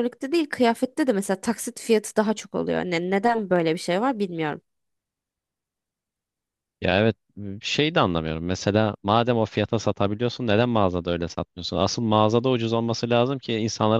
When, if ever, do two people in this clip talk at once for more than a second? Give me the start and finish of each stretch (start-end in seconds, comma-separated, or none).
none